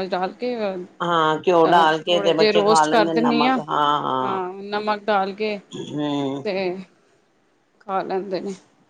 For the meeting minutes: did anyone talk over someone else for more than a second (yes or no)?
yes